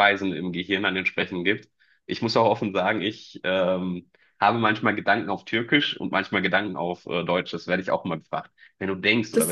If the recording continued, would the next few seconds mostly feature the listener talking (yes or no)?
no